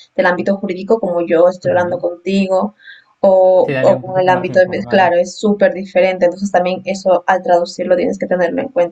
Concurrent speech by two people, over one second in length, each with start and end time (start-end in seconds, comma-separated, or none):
3.6-5.1